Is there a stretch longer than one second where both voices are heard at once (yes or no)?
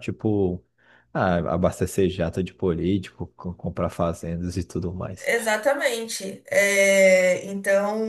no